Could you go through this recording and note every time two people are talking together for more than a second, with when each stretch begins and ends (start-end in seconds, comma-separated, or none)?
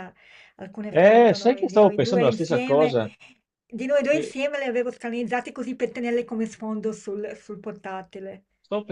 0.9-3.0